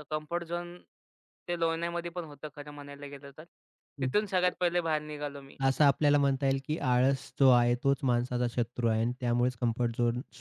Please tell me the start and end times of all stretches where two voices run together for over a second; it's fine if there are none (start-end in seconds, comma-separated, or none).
none